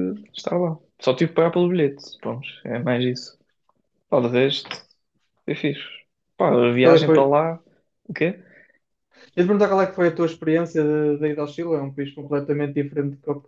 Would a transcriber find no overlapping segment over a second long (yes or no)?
yes